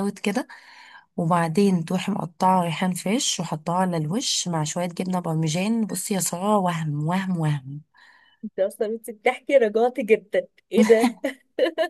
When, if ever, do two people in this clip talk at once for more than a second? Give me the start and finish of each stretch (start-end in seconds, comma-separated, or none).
none